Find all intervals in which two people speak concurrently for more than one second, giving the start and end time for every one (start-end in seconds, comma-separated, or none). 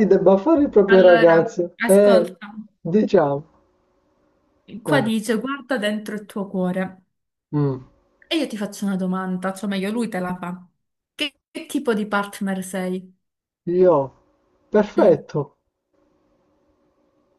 0.9-2.3